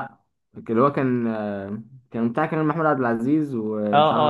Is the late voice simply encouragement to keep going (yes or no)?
no